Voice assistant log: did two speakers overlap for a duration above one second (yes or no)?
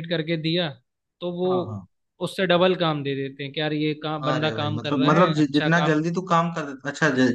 yes